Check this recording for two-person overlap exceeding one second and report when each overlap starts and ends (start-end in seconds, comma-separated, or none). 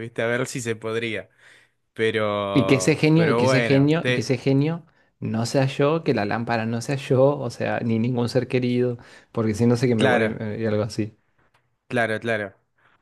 2.5-4.3